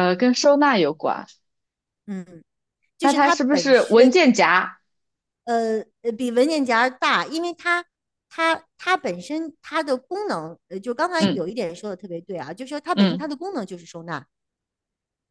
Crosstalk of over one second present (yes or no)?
yes